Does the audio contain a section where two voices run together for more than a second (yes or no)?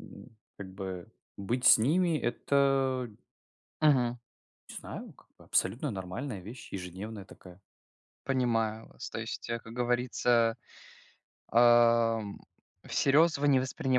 no